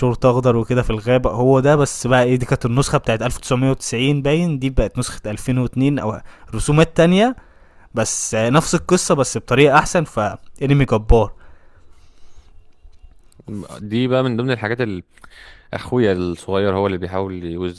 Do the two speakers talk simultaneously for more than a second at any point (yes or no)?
no